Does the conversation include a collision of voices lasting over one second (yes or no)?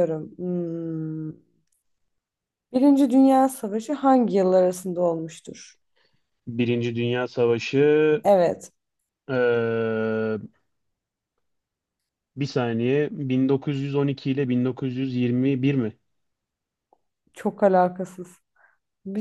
no